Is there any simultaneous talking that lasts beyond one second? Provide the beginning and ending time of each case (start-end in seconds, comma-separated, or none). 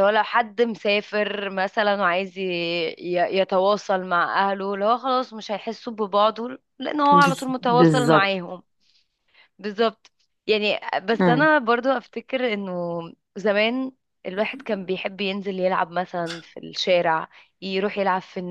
7.1-8.3